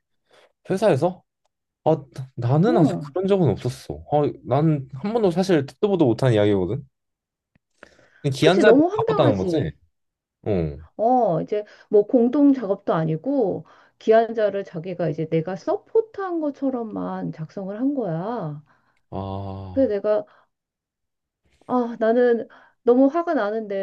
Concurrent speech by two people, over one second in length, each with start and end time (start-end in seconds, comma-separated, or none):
8.4-9.7